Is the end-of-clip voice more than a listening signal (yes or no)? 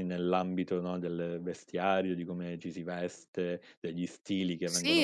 yes